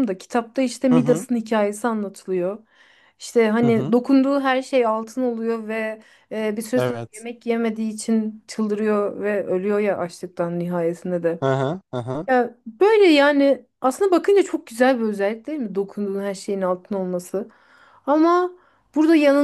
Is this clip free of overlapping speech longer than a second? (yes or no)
yes